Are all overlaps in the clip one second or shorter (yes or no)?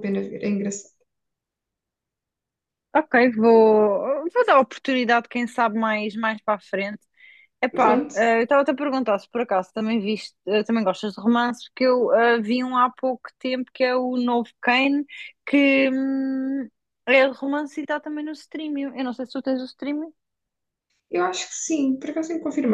yes